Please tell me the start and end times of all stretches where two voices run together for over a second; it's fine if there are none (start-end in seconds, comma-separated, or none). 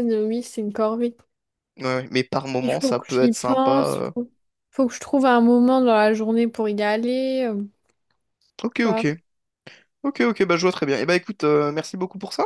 2.6-4.1